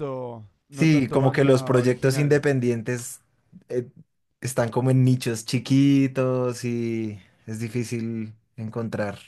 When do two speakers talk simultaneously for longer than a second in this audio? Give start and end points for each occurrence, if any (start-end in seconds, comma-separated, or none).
0.7-2.4